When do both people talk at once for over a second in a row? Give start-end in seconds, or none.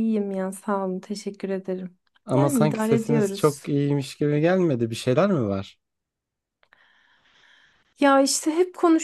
2.3-3.6